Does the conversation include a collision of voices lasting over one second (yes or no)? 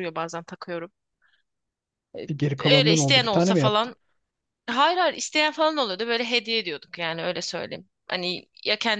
yes